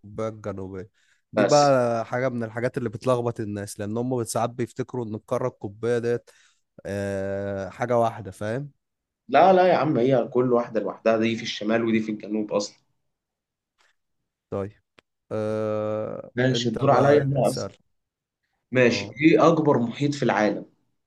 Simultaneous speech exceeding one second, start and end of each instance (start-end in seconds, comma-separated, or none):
16.4-17.7